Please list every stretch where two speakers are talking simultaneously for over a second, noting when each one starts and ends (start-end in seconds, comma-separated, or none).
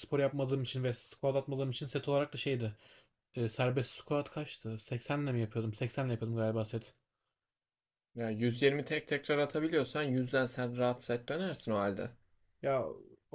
none